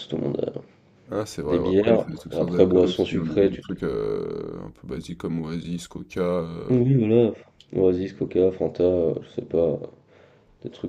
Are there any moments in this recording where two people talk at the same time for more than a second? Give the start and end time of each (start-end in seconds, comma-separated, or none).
1.5-3.6